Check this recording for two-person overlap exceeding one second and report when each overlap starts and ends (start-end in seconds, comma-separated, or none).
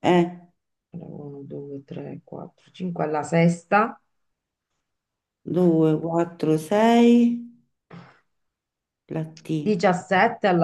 none